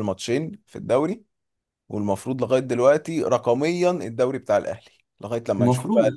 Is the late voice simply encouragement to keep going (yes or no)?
no